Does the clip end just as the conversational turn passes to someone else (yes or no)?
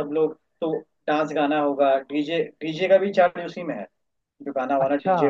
yes